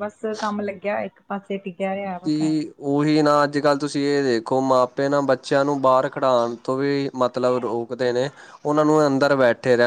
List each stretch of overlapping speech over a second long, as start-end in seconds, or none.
none